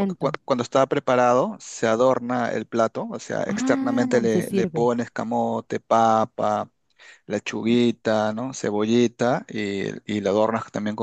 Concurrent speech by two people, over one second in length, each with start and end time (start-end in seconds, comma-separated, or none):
3.5-4.9